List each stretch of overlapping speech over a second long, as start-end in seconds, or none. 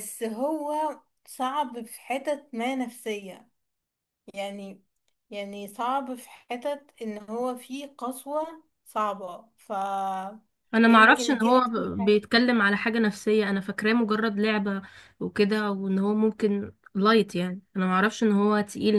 10.9-12.3